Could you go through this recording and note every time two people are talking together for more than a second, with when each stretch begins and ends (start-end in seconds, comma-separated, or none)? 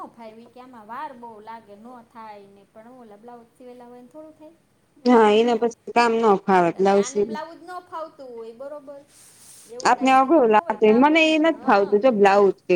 9.9-12.0